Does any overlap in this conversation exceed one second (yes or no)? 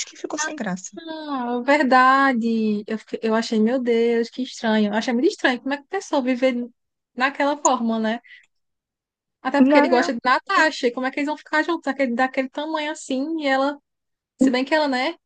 no